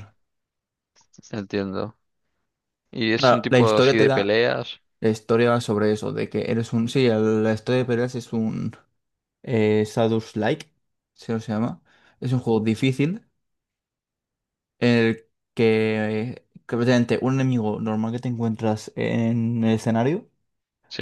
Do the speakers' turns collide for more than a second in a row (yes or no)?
yes